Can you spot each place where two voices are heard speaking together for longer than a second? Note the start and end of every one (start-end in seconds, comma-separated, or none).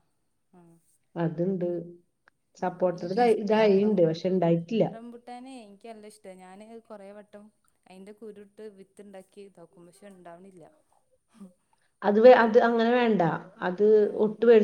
none